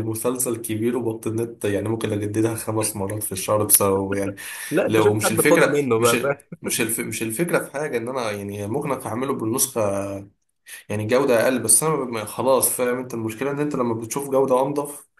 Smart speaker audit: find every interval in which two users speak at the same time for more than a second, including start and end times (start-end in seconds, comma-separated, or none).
4.9-6.6